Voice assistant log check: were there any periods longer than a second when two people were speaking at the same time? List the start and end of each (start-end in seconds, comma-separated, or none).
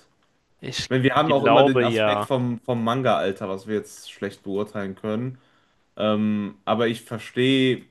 0.9-2.3